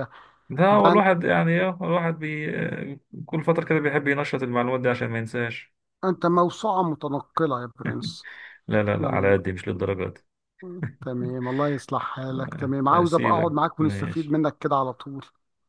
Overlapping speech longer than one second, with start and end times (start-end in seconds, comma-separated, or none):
12.3-14.4